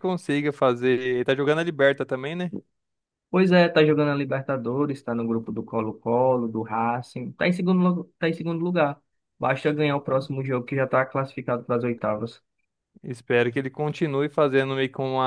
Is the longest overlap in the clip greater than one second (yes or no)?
no